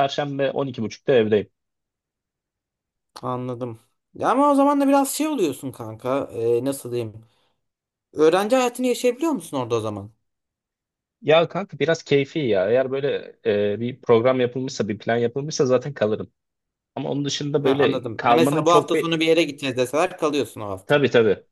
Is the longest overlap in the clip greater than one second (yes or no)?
yes